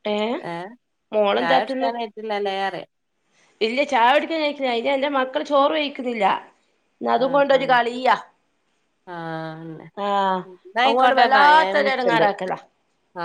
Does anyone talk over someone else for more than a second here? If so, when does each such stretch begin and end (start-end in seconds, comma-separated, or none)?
10.9-12.2